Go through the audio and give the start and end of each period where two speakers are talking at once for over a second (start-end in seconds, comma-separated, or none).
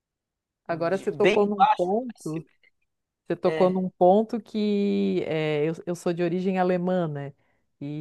0.7-2.3